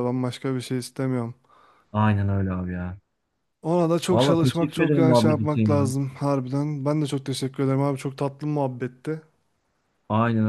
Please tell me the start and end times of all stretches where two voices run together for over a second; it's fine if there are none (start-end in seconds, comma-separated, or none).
4.1-5.9